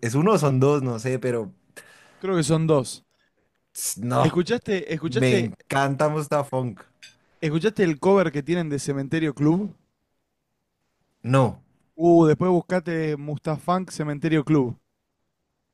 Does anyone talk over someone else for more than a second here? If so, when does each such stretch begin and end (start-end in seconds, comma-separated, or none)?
none